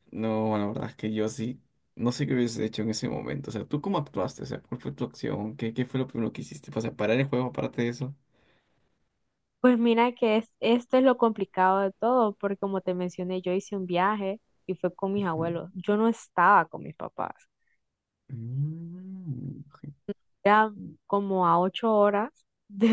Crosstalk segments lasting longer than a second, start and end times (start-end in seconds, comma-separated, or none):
none